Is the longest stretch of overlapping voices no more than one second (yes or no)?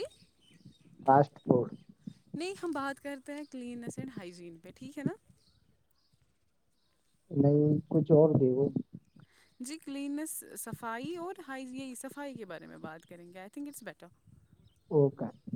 yes